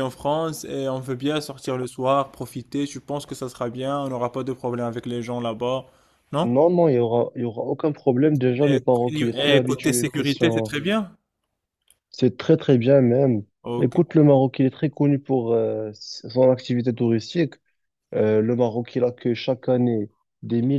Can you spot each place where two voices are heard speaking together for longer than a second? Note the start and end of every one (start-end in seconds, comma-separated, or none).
9.6-10.8